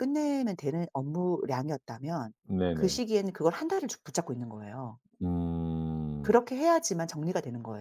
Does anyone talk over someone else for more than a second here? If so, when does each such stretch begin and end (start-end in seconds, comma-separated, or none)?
none